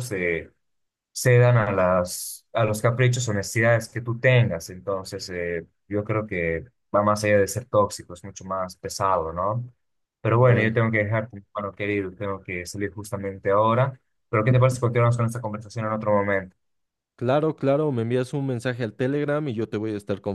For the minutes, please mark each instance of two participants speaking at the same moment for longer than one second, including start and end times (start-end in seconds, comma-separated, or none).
none